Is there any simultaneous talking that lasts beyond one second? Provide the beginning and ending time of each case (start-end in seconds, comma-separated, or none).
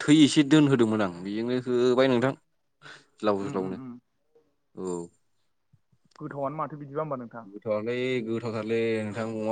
none